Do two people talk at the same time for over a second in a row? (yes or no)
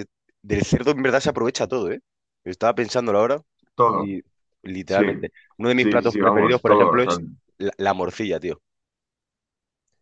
yes